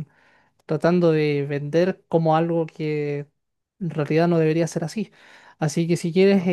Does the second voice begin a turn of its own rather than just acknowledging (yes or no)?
no